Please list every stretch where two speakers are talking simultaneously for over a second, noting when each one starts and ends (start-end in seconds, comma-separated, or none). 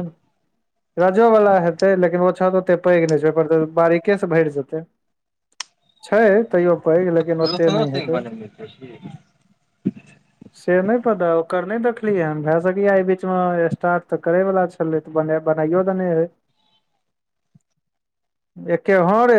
6.4-8.2